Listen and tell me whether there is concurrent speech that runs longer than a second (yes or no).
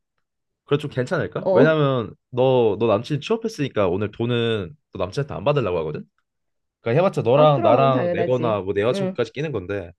yes